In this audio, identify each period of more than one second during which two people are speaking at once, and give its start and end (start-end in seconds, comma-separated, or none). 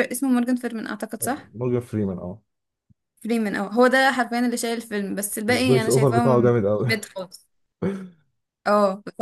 5.5-6.9